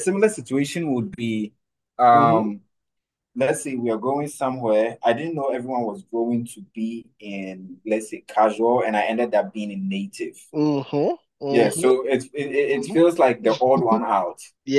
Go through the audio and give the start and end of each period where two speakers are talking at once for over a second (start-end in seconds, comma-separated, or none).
12.5-14.0